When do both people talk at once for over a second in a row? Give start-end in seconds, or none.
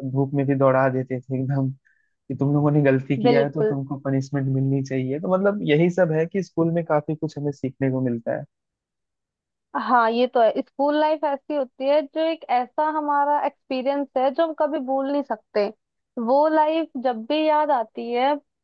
none